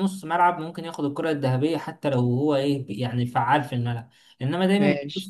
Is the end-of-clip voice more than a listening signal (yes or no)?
no